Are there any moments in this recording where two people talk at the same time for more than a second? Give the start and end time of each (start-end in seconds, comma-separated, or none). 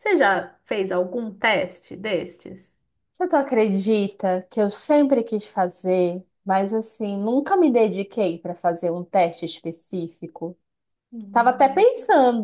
none